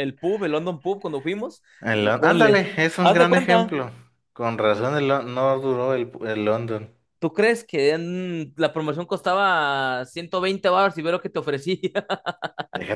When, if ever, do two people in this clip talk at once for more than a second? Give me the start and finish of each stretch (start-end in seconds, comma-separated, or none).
1.8-3.7